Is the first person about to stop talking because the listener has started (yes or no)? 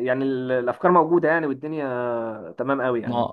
yes